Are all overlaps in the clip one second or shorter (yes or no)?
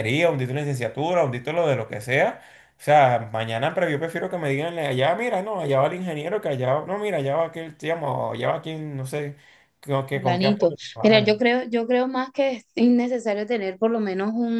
no